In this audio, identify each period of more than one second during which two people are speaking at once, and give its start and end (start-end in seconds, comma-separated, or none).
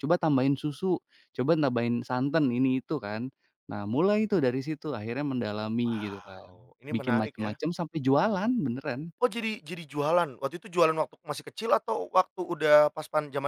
5.8-7.5